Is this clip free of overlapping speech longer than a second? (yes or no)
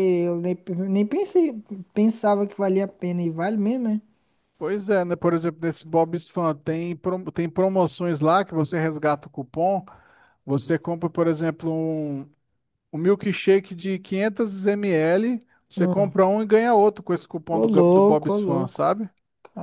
no